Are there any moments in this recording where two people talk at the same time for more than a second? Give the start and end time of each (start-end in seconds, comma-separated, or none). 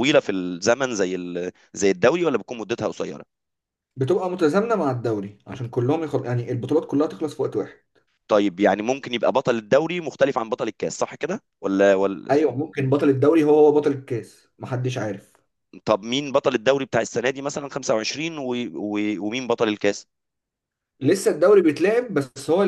none